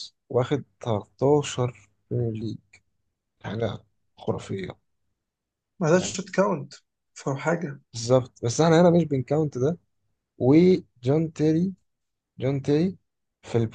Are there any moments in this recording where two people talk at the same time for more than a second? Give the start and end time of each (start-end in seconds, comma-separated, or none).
none